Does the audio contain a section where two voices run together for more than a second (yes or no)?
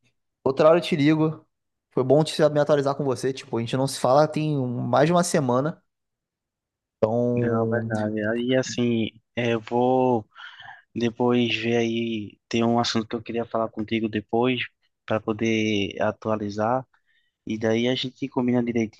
no